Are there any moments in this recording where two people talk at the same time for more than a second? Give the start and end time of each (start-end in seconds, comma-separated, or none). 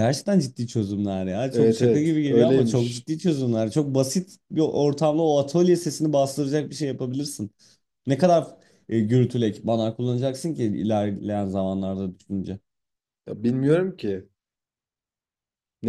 1.5-3.1